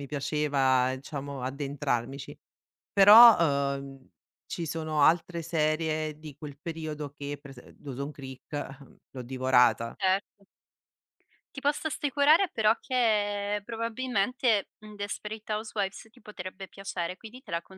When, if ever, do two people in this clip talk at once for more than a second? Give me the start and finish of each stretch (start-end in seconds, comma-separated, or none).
none